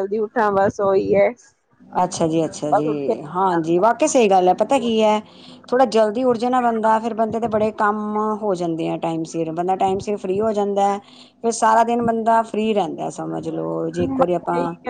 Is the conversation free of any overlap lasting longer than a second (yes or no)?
yes